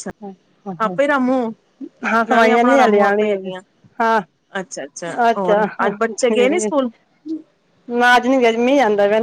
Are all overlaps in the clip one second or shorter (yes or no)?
no